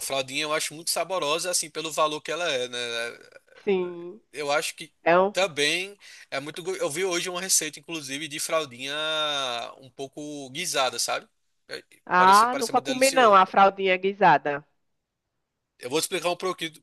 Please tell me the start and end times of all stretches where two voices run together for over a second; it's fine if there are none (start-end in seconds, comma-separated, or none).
12.1-13.4